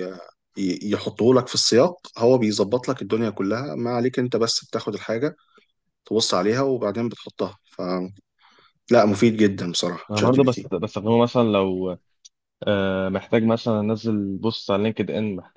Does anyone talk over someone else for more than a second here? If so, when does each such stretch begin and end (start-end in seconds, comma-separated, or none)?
none